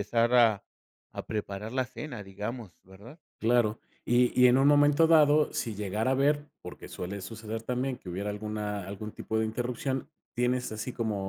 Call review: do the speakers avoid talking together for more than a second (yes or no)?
yes